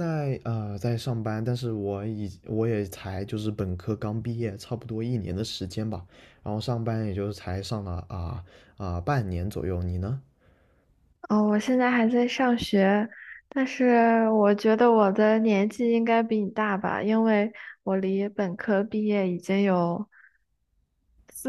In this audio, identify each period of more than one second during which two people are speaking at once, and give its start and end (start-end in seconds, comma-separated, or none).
none